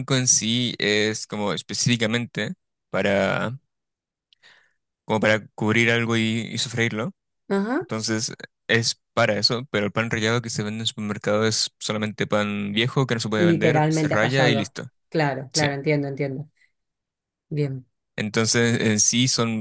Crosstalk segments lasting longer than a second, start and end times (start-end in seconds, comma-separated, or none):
13.4-14.7